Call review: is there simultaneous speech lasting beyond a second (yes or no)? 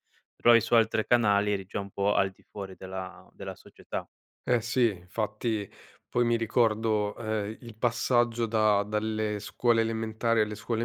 no